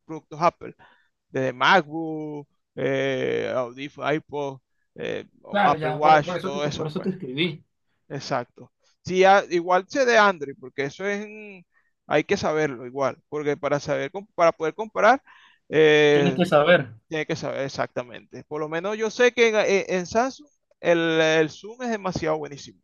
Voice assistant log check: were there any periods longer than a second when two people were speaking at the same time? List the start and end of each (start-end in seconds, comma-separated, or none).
5.6-7.1